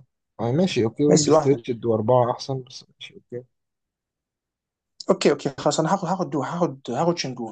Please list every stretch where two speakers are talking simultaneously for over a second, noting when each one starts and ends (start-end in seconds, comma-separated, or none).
none